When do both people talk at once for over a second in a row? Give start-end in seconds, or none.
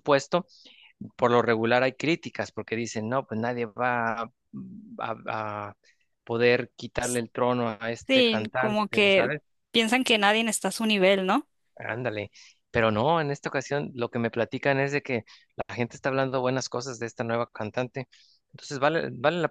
8.1-9.3